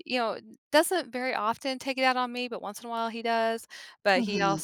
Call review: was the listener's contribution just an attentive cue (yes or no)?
yes